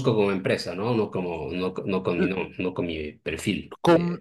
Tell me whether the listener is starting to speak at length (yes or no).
yes